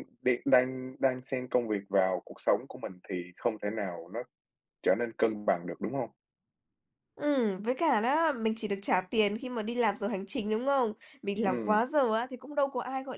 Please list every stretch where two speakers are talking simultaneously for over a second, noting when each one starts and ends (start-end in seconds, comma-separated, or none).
none